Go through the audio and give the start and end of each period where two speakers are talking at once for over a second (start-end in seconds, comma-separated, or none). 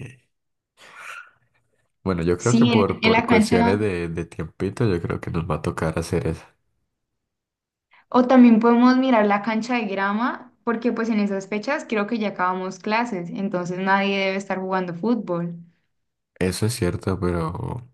2.4-3.8